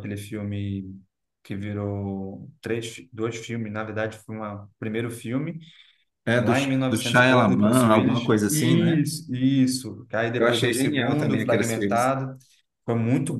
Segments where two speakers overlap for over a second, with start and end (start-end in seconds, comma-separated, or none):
6.4-9.1, 10.4-12.2